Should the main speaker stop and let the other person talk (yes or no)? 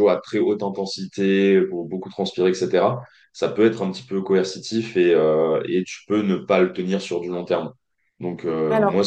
no